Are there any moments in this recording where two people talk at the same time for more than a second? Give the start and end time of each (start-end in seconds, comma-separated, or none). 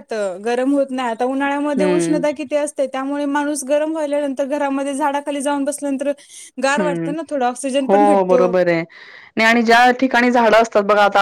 none